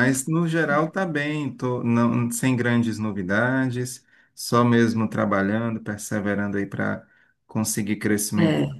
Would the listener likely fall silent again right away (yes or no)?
yes